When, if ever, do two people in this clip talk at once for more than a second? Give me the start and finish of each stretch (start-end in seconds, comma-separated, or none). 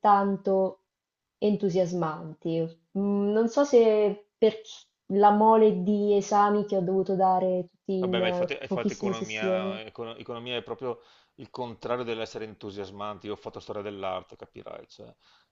7.9-9.8